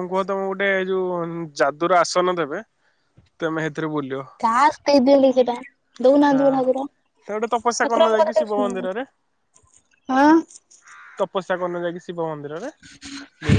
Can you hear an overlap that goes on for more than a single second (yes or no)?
yes